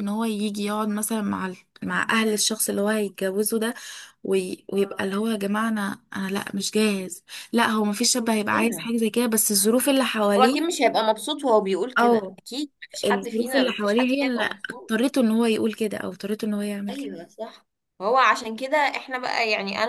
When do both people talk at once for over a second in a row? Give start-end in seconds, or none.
13.0-14.9